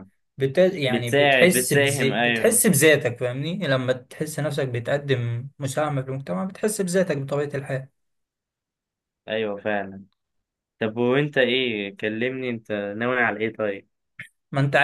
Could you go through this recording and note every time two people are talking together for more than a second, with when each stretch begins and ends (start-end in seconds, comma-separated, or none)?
0.9-2.6